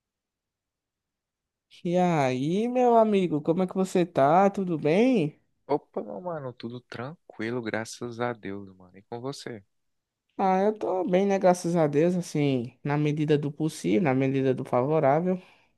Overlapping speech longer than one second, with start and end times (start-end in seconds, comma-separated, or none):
none